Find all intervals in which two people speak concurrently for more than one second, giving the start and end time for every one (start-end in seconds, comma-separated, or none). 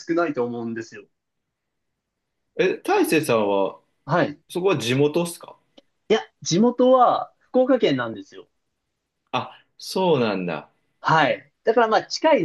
none